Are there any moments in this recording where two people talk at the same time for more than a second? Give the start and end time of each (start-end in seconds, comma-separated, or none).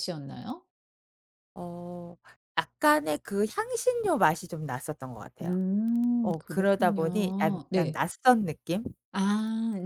6.2-8.0